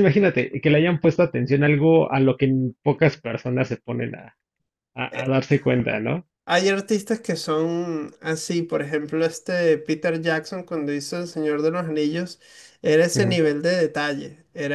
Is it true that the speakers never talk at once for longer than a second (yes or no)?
yes